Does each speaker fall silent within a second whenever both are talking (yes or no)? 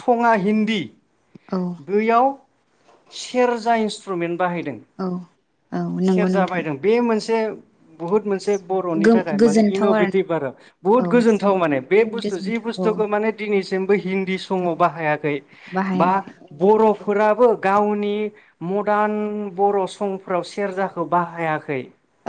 no